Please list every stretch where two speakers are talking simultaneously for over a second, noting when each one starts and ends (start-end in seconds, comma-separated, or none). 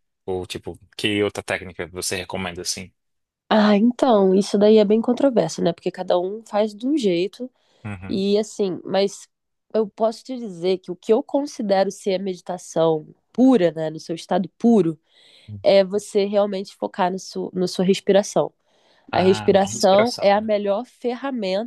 19.1-20.5